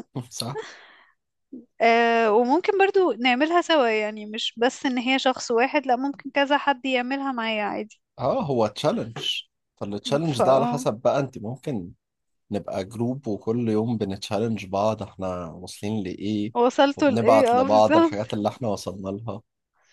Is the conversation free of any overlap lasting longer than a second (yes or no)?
no